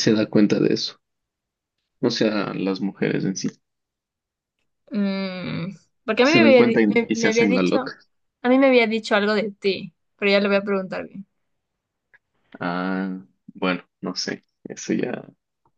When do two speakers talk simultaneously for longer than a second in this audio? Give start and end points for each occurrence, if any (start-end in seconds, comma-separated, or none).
6.2-7.9